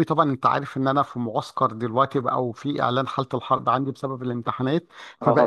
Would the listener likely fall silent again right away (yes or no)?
yes